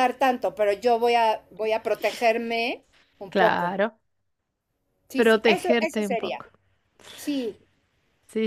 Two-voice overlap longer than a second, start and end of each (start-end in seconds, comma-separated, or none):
5.2-6.4